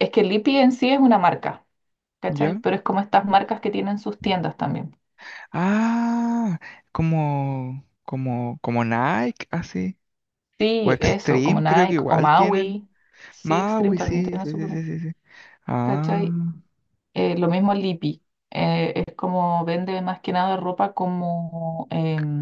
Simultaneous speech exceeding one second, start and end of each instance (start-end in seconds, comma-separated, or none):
10.8-12.8, 13.4-14.8